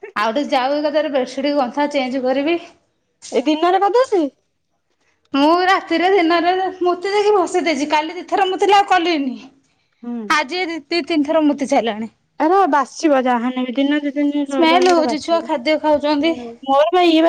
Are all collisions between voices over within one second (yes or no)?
no